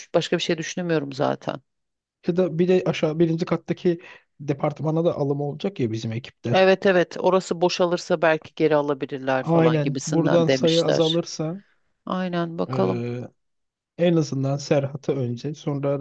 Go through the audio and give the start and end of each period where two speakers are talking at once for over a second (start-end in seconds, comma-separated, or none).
9.4-11.2